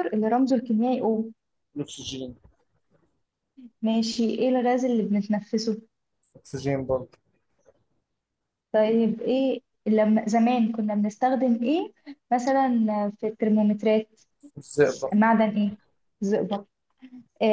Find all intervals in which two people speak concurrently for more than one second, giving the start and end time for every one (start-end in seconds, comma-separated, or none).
none